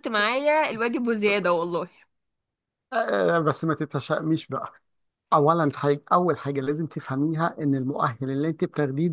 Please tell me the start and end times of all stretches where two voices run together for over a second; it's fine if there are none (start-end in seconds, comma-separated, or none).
none